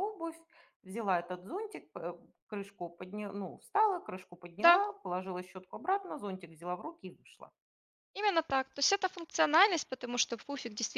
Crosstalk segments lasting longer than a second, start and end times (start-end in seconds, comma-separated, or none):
none